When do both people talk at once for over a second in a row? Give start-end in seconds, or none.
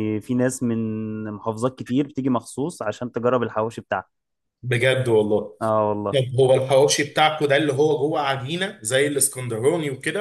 none